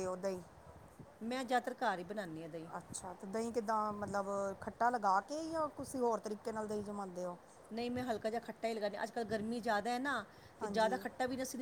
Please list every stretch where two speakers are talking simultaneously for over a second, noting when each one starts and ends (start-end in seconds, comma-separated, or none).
none